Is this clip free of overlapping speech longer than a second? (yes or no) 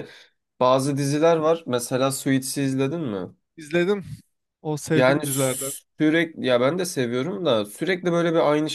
yes